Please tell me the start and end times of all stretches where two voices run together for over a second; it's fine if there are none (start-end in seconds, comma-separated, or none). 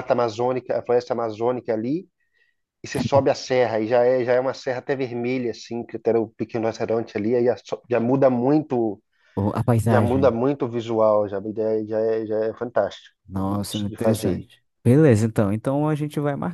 13.3-14.5